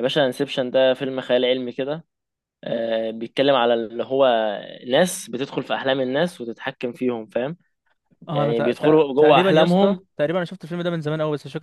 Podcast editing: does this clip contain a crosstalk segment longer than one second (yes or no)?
yes